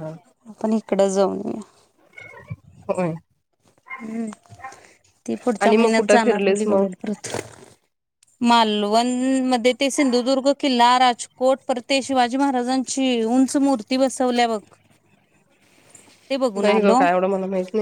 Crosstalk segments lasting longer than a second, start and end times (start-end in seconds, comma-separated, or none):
5.6-6.9